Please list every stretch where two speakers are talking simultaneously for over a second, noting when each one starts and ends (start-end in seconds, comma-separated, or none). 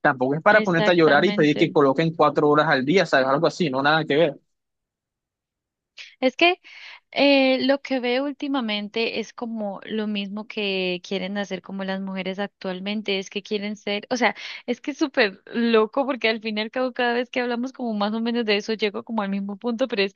0.5-1.7